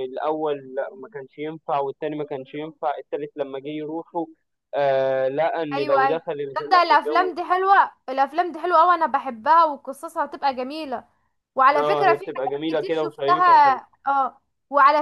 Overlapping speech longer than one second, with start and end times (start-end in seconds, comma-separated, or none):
5.7-7.3, 11.8-13.4